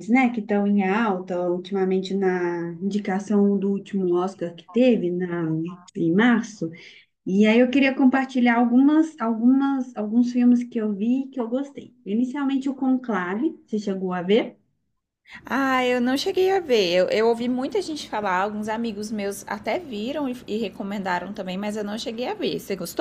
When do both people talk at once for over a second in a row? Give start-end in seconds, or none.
none